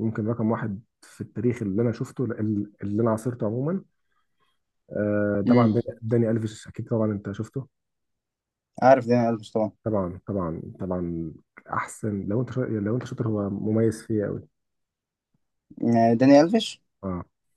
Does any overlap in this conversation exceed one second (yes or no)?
no